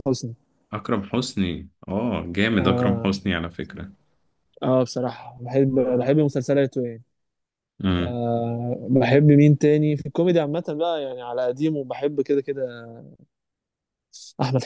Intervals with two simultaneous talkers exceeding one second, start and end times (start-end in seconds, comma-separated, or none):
none